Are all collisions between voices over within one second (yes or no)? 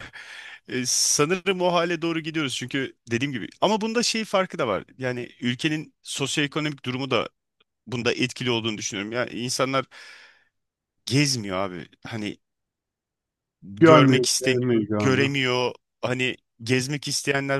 no